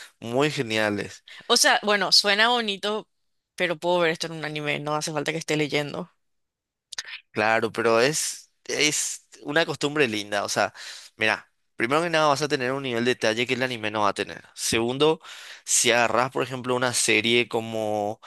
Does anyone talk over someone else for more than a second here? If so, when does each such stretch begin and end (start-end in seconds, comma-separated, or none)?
none